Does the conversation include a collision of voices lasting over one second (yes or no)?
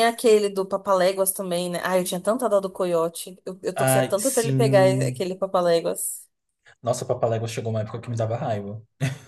yes